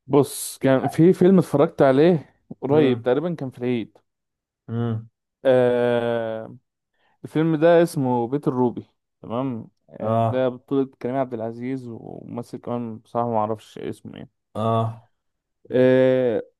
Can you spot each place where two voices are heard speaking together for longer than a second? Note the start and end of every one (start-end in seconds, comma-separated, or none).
none